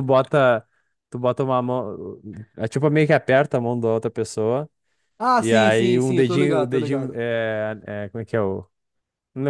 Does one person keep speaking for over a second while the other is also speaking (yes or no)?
yes